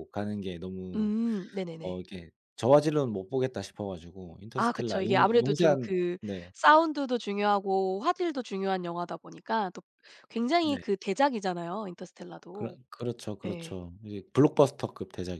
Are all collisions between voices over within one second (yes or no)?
no